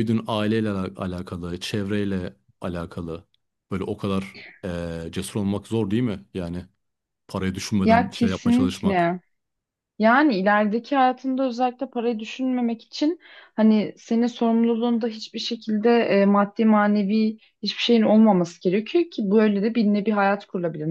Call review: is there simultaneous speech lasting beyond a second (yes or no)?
yes